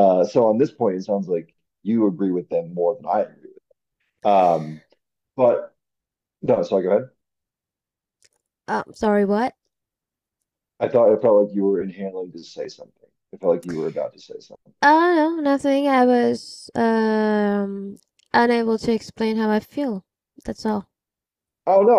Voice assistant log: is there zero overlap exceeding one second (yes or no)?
yes